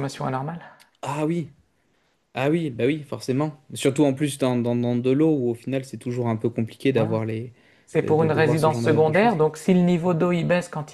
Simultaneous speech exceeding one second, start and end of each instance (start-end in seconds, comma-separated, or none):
8.0-9.4